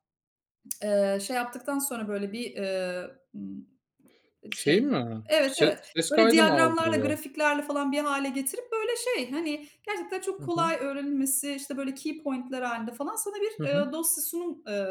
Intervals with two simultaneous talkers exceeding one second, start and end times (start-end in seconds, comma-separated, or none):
4.7-7.2